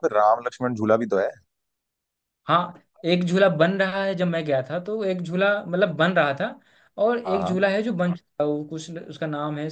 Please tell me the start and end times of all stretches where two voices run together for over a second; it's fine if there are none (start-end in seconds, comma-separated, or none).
none